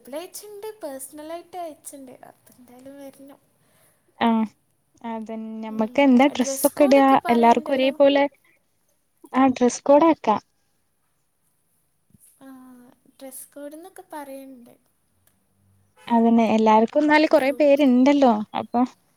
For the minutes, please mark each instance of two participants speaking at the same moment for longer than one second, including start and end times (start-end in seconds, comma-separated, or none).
6.4-7.9